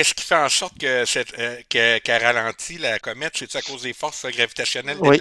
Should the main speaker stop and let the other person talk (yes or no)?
yes